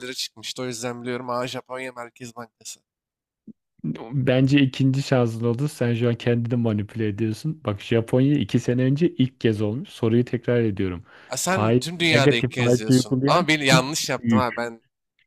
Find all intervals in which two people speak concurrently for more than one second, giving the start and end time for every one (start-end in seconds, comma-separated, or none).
11.5-14.7